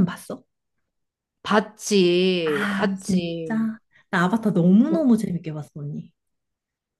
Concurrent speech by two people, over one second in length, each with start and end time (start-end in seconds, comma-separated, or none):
2.4-3.7